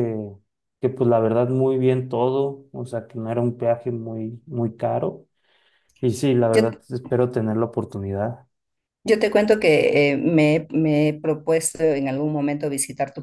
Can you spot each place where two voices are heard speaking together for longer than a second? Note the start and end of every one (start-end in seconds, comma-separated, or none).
none